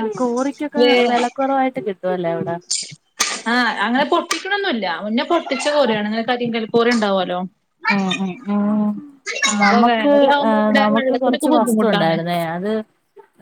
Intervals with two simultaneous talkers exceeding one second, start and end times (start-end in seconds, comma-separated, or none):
9.9-12.1